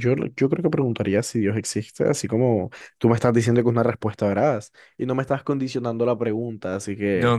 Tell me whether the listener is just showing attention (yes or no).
no